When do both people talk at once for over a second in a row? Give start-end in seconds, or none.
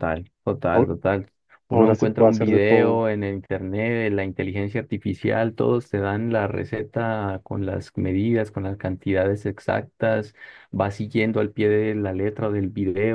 1.7-3.1